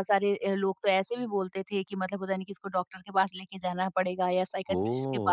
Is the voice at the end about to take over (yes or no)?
no